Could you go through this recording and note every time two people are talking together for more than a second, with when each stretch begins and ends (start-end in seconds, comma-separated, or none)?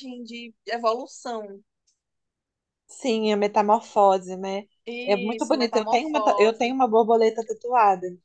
5.1-6.8